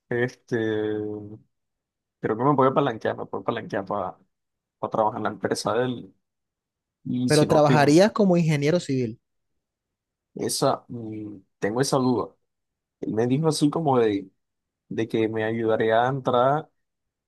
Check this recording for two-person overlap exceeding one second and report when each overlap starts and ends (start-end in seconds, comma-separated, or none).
none